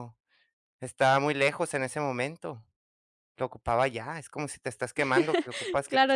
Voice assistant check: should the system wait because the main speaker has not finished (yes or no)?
no